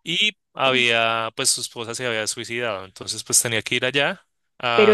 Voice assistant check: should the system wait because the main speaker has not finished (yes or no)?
no